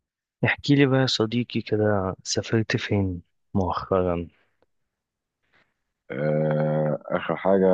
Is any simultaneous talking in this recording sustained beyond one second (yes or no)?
no